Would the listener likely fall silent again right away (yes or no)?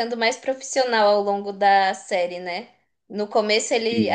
yes